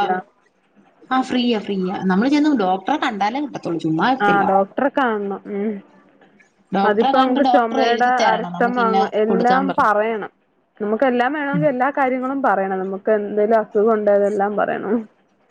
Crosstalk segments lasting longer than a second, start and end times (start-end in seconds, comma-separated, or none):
6.9-9.9